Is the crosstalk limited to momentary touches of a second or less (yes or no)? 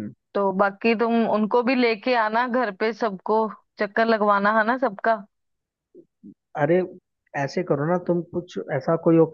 yes